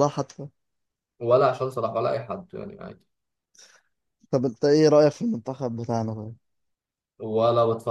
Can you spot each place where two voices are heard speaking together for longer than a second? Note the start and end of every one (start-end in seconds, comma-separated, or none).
none